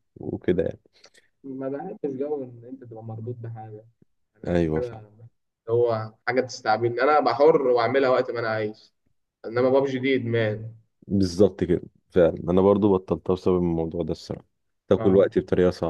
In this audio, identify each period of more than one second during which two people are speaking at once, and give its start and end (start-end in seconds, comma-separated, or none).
none